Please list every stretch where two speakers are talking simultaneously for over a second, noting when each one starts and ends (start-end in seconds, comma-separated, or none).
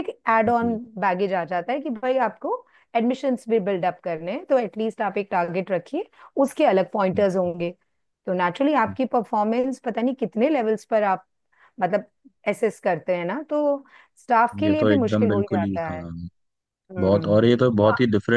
14.6-16.0